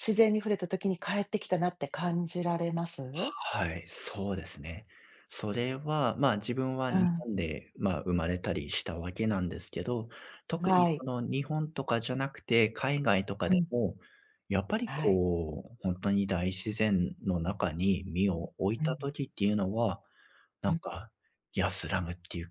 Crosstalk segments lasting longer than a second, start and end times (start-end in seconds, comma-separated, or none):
none